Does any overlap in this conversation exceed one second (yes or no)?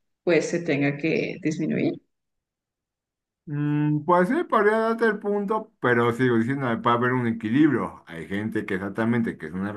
no